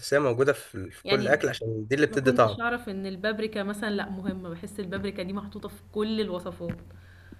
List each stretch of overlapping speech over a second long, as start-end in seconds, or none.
none